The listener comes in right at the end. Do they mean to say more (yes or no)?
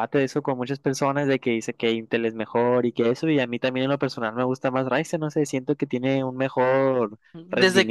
yes